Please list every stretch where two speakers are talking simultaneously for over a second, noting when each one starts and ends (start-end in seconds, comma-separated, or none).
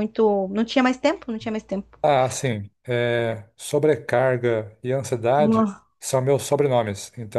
none